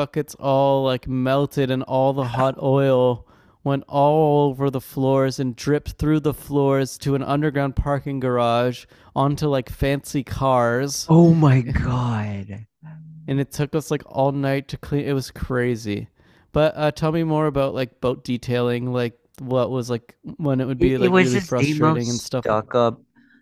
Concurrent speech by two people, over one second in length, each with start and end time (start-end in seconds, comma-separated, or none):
20.8-22.6